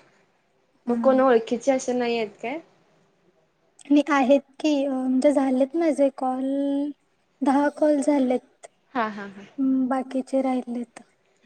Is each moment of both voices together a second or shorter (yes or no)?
yes